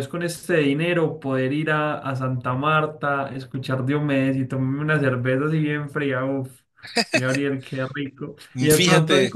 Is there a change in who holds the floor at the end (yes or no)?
no